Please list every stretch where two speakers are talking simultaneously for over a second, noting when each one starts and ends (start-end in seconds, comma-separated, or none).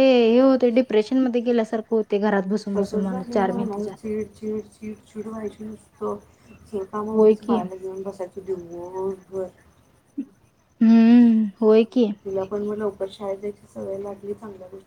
none